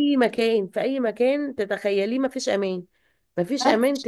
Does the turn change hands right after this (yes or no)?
no